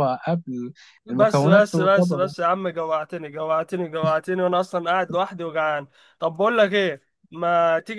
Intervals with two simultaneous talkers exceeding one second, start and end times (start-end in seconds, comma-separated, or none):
1.1-2.3